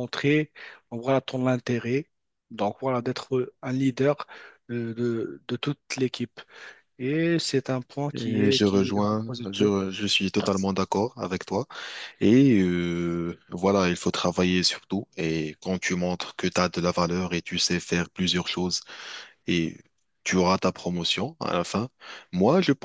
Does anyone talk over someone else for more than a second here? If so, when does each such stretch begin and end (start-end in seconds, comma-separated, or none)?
8.1-9.7